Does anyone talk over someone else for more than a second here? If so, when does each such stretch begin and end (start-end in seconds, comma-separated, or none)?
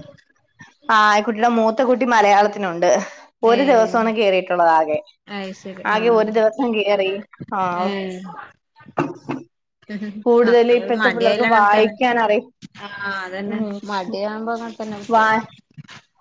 10.4-11.9